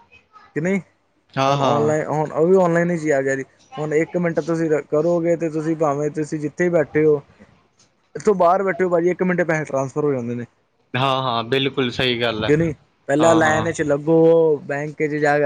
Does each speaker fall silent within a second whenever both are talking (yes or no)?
yes